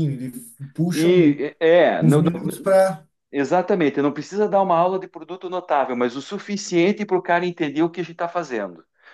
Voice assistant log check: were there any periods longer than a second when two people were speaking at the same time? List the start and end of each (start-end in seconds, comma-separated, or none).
none